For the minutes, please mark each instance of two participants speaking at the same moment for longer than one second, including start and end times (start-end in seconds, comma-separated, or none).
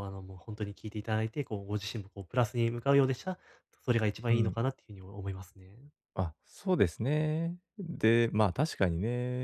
none